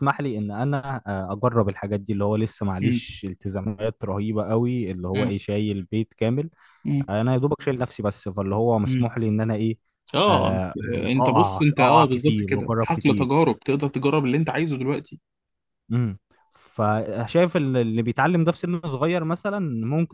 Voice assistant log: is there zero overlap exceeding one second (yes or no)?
no